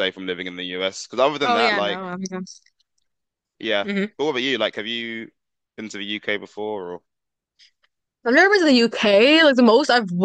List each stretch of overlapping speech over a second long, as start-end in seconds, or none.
none